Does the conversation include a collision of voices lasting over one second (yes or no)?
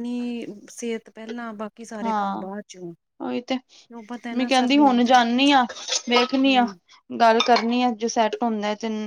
yes